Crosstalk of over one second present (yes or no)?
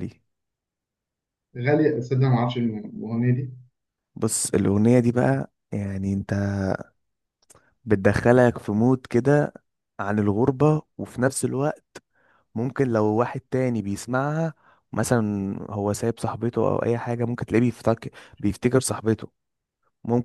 no